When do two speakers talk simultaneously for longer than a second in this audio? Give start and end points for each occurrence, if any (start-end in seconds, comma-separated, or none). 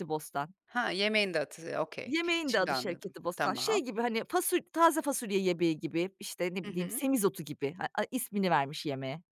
2.0-3.9